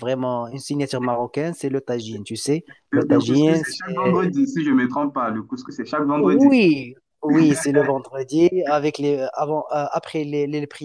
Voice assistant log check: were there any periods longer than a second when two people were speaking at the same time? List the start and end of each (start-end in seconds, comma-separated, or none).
2.9-4.3